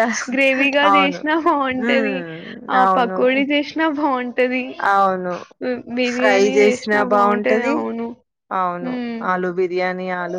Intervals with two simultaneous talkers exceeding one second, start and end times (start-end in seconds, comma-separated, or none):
6.1-7.7